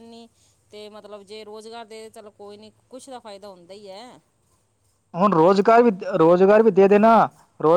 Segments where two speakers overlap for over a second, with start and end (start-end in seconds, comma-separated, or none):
none